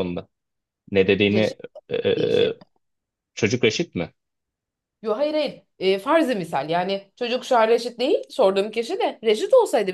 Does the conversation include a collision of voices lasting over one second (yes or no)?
no